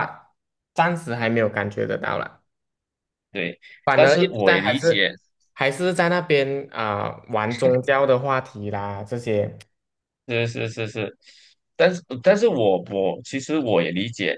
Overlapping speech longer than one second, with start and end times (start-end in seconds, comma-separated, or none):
3.8-5.1